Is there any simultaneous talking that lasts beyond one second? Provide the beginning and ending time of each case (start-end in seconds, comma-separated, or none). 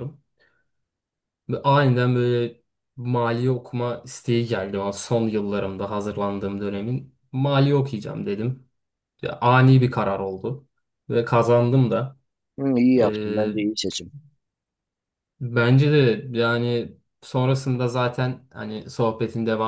none